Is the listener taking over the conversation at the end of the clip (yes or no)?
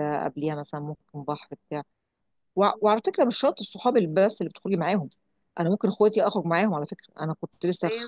no